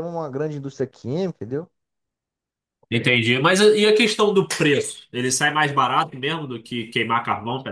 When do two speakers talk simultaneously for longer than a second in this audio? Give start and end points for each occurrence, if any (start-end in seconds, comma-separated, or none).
none